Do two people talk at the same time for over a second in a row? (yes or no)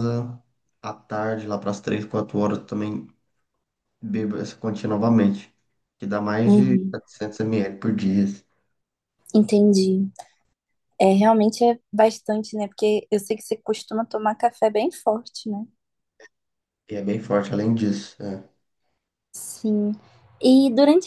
no